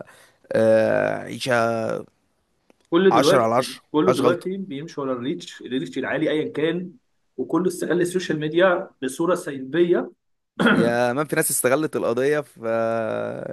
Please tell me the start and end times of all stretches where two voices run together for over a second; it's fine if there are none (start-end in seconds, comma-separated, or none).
3.1-4.5